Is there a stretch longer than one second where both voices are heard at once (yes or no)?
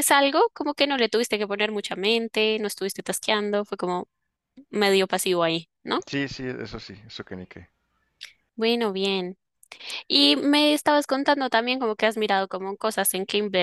no